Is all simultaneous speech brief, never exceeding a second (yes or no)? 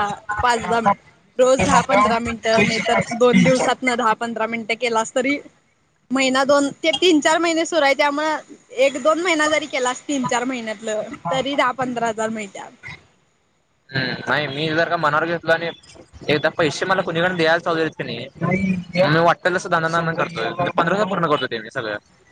yes